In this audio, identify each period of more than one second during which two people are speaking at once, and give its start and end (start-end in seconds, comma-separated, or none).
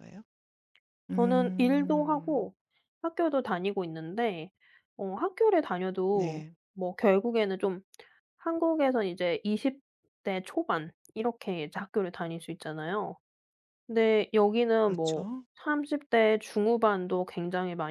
1.1-2.5